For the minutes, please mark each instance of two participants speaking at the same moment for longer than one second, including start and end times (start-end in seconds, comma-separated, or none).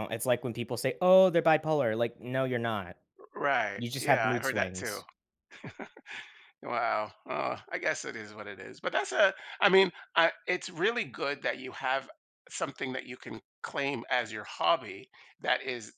3.8-5.0